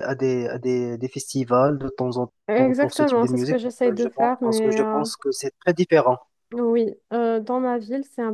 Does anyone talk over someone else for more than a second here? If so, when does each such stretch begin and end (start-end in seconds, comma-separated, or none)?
2.5-5.0